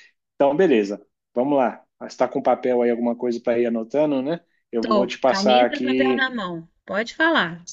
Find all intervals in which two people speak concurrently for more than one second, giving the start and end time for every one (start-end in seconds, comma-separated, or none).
4.8-6.3